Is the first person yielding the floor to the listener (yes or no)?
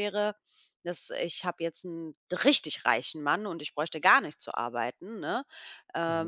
no